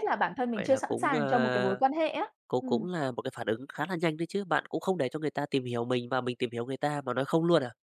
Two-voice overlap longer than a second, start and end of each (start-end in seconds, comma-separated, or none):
0.5-1.8